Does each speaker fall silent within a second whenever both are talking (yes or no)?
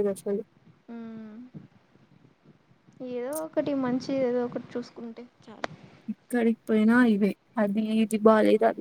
yes